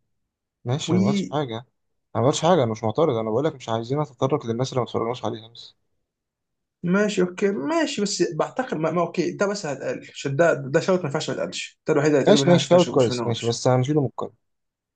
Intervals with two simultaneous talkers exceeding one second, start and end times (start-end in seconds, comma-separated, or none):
12.3-13.6